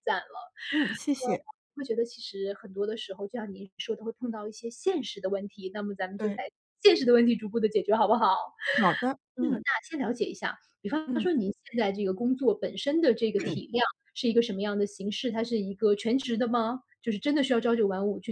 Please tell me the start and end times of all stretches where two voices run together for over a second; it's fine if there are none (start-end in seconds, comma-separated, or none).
none